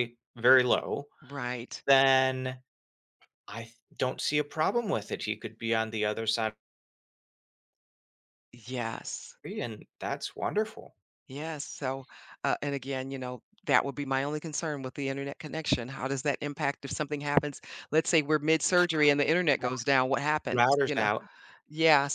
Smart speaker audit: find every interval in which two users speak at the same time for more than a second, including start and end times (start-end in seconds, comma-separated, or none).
none